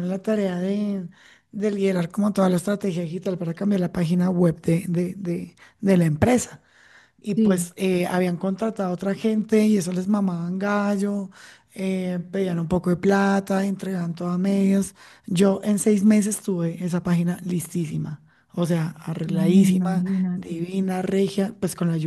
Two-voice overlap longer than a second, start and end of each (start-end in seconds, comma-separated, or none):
19.2-20.6